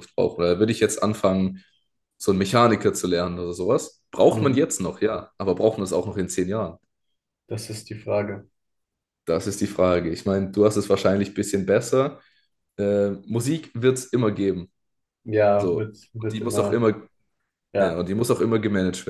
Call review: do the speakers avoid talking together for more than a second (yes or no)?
no